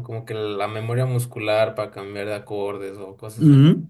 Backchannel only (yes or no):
no